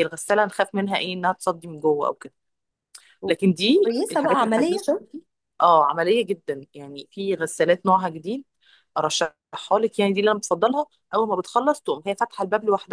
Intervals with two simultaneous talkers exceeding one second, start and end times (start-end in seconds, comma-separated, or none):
3.3-4.9